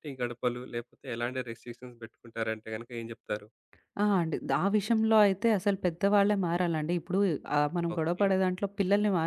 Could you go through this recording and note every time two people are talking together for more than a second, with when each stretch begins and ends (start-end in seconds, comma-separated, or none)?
none